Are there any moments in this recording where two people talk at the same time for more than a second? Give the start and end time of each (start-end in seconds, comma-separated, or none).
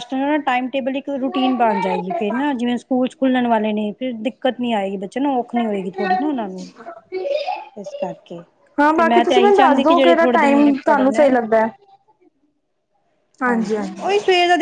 8.9-11.3